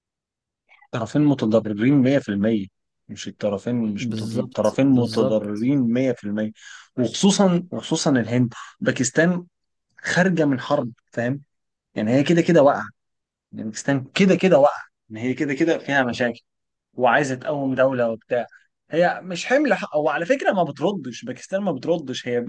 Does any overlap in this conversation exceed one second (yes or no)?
yes